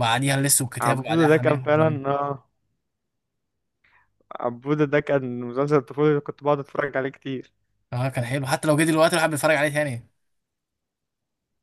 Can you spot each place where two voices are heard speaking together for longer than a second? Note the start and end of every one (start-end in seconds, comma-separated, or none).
0.8-2.0